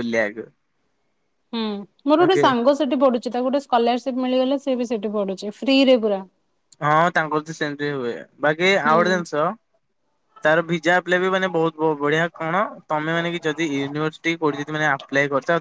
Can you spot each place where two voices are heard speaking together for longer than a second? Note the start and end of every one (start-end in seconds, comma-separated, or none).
none